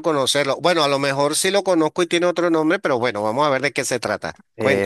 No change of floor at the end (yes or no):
no